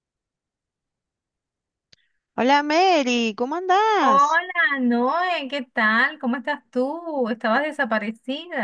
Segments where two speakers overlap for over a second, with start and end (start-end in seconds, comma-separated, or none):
none